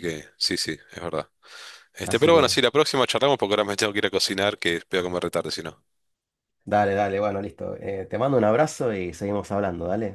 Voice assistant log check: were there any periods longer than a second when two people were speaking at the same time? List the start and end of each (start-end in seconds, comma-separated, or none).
none